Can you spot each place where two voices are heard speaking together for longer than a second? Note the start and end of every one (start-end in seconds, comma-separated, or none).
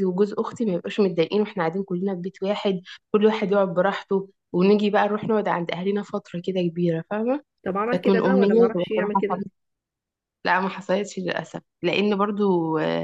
7.9-9.5